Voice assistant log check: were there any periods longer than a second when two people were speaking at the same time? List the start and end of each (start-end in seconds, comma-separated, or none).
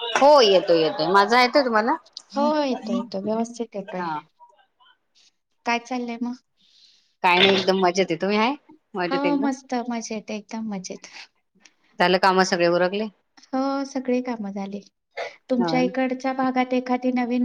none